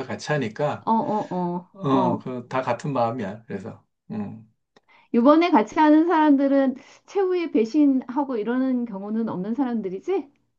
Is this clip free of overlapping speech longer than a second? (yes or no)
yes